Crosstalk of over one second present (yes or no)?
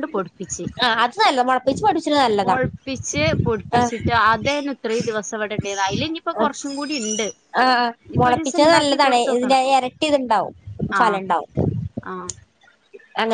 yes